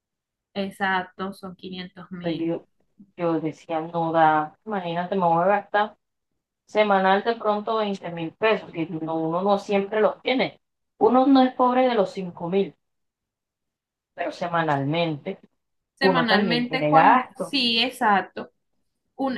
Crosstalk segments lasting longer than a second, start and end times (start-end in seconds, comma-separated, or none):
16.0-17.5